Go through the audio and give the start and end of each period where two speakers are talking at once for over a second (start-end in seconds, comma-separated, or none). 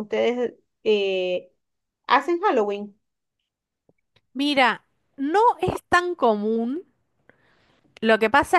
none